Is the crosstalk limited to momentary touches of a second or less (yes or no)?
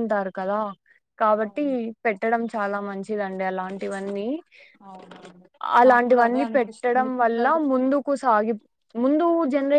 no